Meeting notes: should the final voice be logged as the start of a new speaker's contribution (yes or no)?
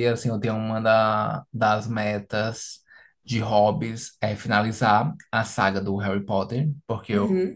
no